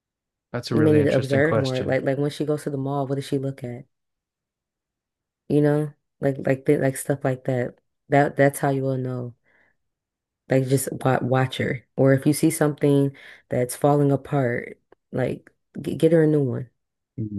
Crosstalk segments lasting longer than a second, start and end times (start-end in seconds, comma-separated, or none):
0.7-2.0